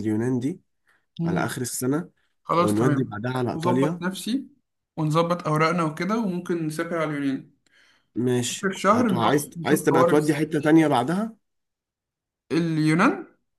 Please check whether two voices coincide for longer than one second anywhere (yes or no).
yes